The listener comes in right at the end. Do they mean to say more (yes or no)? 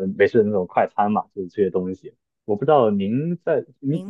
no